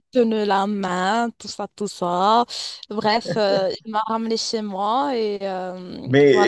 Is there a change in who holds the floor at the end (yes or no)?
yes